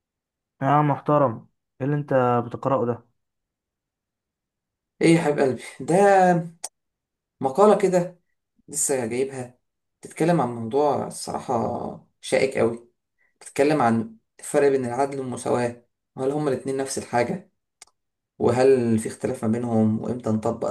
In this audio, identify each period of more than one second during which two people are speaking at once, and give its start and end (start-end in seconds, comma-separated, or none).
none